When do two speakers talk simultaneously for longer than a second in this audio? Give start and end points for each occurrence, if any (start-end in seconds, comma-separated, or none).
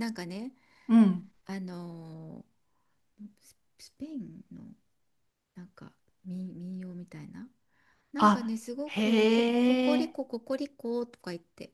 8.2-10.2